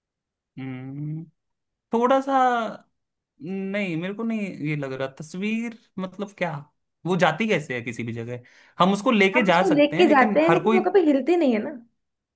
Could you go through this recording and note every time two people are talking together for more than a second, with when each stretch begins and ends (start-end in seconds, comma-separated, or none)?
9.3-10.8